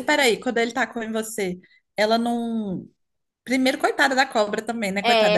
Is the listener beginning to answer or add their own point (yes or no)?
no